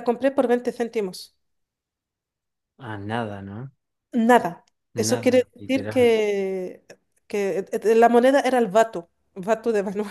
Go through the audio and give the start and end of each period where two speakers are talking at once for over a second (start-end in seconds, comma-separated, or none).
4.9-6.2